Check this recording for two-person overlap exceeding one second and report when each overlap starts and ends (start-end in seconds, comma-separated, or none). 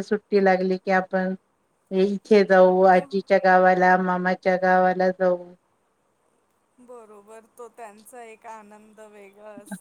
none